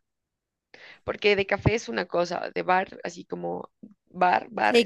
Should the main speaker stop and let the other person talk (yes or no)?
yes